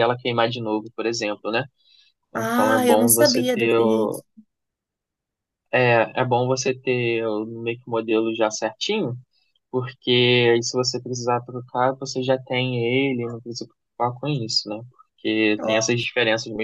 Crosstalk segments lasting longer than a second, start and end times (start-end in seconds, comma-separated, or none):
2.3-4.2